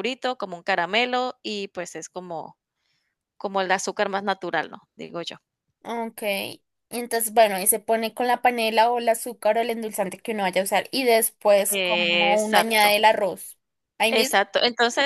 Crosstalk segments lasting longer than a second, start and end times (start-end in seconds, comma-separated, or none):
11.7-13.0